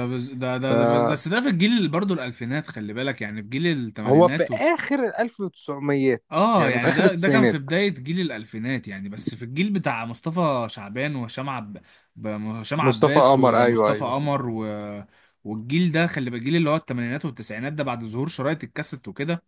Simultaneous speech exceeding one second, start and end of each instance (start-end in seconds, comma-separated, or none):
6.3-7.7, 12.8-14.2